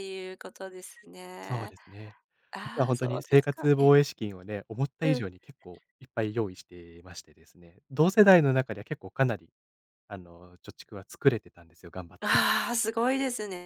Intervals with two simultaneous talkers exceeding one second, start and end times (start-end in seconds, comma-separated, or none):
2.6-3.9